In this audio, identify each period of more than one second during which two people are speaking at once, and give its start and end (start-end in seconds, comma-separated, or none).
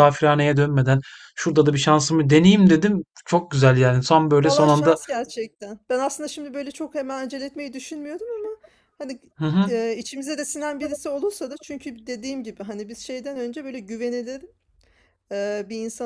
none